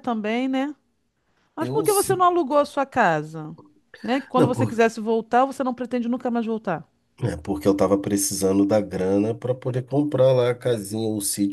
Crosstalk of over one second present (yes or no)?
no